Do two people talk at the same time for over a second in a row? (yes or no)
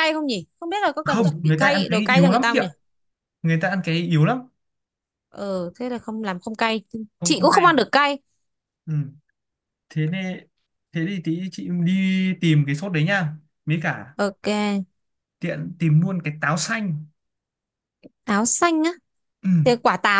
yes